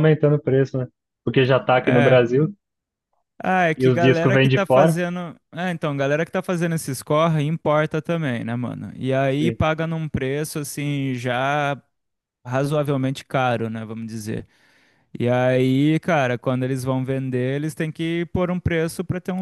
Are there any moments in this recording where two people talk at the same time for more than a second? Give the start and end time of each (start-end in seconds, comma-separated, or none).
3.8-5.0